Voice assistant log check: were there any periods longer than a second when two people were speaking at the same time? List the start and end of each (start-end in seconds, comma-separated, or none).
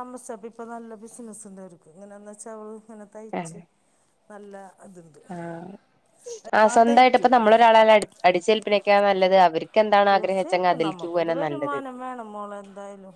10.1-11.8